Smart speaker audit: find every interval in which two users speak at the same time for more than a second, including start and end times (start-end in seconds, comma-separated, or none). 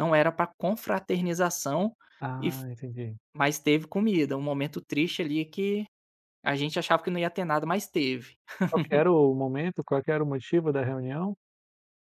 none